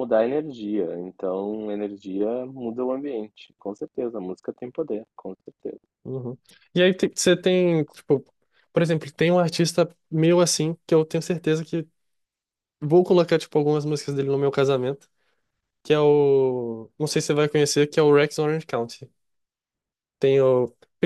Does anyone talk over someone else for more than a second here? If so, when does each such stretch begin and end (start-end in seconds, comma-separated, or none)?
none